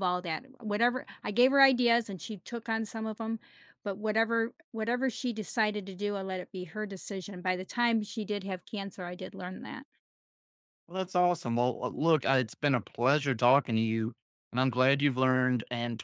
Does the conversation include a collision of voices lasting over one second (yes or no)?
no